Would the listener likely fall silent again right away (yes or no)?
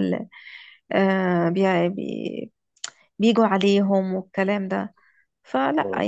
no